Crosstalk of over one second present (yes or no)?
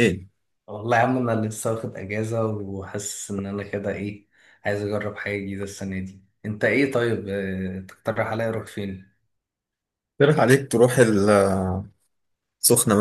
no